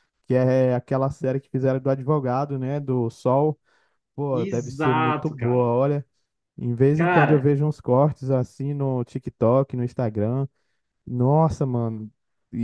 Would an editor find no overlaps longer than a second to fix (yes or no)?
no